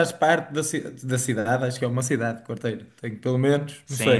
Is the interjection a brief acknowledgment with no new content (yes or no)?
no